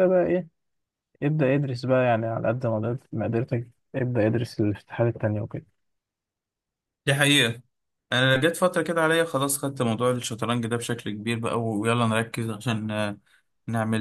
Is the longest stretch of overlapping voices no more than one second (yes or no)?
yes